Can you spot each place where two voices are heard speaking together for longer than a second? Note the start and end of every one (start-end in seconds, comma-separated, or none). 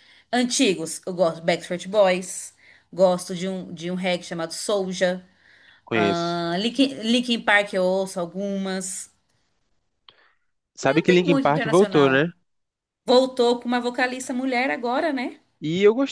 10.8-12.2